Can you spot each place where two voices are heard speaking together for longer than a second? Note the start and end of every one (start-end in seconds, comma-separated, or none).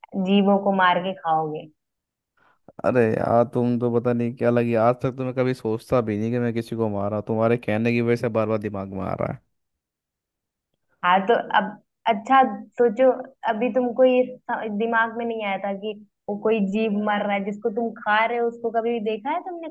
none